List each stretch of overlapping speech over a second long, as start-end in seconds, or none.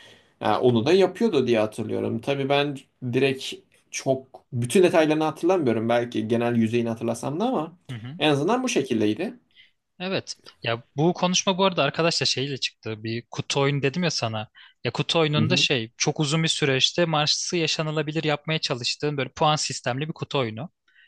none